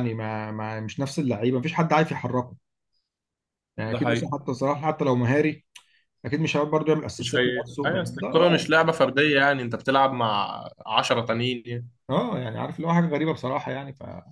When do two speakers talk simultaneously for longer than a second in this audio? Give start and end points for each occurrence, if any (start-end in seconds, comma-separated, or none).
7.2-8.7